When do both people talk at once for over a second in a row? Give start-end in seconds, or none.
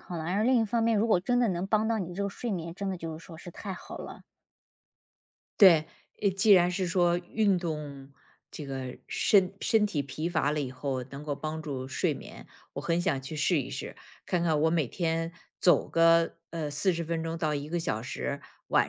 none